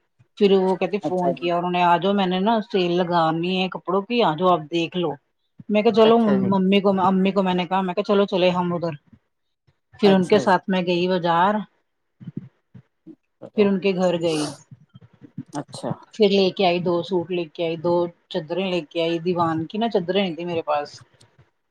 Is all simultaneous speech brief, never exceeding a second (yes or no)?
yes